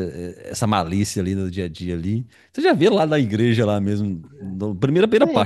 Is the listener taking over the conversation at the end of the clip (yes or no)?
yes